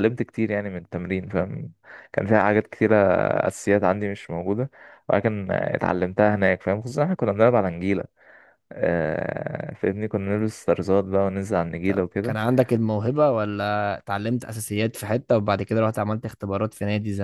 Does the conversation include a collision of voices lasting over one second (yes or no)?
no